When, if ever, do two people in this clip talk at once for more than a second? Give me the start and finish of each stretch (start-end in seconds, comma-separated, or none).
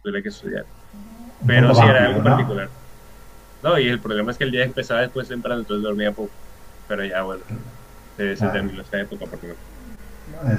1.5-2.7